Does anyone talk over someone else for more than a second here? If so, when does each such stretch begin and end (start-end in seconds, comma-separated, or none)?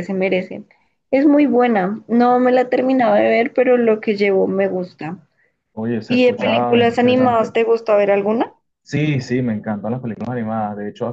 6.1-7.5